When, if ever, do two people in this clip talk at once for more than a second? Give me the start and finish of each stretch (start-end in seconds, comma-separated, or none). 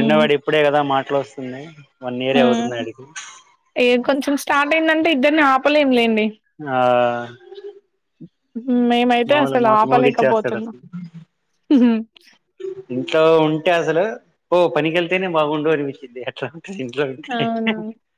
9.3-10.7